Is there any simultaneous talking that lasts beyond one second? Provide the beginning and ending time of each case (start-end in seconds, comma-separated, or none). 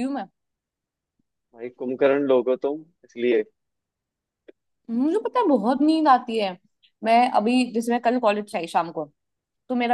none